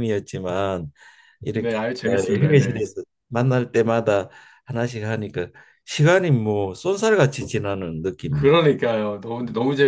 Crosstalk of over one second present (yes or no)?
yes